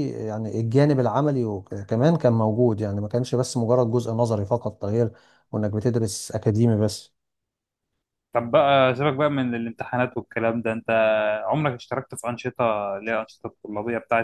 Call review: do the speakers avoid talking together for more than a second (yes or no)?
yes